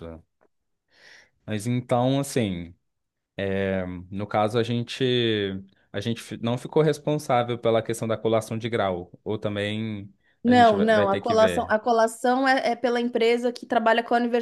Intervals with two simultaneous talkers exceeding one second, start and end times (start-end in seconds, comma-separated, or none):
10.4-11.8